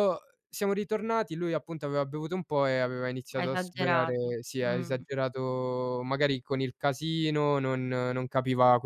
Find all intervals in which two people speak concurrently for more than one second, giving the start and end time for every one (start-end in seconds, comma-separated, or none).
3.3-5.0